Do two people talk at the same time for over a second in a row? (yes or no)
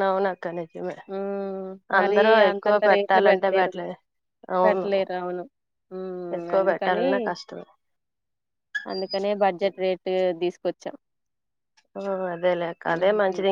yes